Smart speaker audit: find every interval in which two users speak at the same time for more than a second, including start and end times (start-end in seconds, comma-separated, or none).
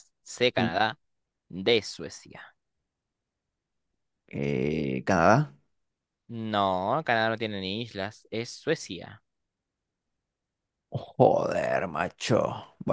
none